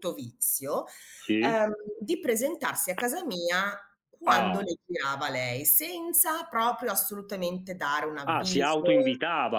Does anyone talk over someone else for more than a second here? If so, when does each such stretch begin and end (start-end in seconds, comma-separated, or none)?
none